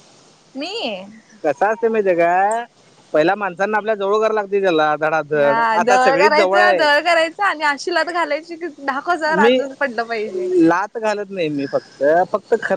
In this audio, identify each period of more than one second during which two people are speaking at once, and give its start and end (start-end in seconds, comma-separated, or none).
5.4-6.8